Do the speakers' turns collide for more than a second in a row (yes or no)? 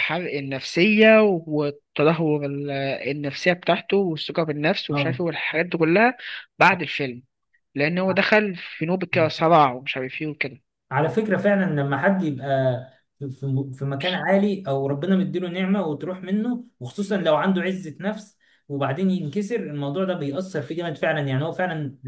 no